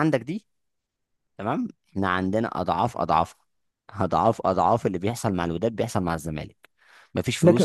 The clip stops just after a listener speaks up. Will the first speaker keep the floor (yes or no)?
no